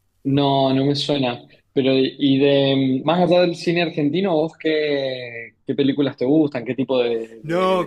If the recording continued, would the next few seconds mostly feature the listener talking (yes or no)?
yes